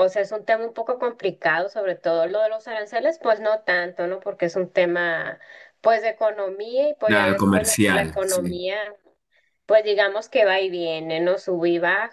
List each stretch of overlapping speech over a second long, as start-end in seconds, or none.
7.1-8.6